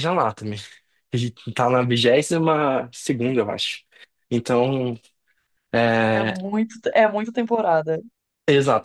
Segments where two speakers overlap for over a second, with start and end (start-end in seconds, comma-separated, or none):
none